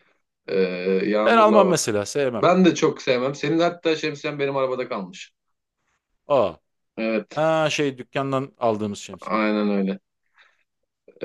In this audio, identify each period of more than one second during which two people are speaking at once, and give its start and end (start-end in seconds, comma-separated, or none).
none